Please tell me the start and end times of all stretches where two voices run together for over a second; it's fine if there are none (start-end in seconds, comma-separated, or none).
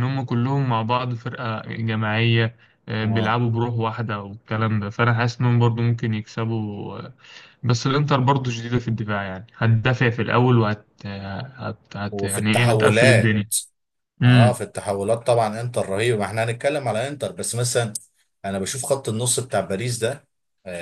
12.1-13.4